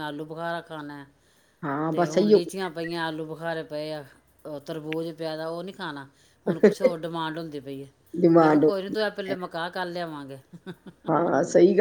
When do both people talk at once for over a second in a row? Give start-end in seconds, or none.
none